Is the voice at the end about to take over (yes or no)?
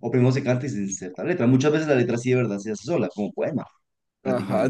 yes